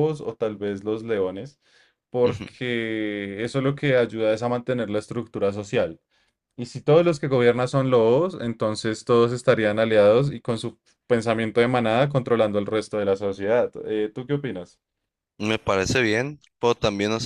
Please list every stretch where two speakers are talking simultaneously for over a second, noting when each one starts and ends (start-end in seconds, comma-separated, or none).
none